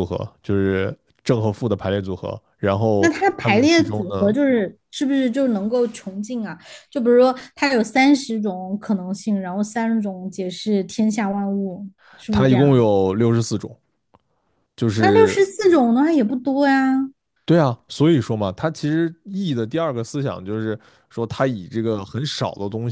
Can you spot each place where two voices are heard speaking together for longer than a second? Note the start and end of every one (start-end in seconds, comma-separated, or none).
3.0-4.3